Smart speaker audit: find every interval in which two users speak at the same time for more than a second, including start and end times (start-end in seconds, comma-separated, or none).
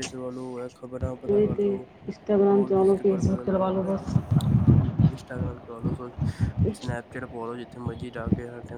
2.5-4.1